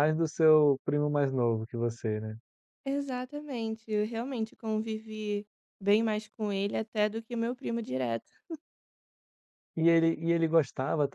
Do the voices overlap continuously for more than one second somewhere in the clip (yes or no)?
no